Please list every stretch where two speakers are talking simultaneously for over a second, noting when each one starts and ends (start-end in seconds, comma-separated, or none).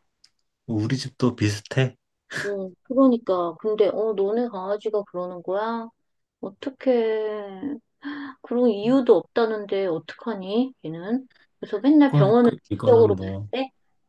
12.1-13.5